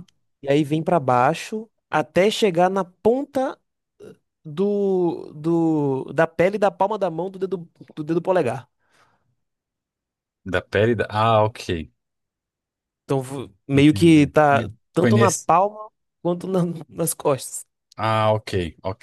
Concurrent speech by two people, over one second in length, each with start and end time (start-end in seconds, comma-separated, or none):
13.7-15.5